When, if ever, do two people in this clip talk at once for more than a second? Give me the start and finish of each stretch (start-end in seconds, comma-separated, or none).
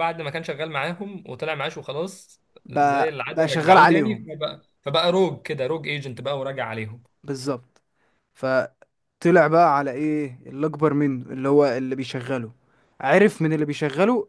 2.6-4.3